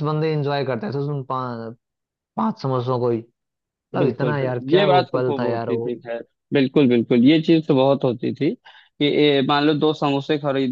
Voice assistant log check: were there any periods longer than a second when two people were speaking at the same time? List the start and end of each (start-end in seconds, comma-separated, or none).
4.0-5.9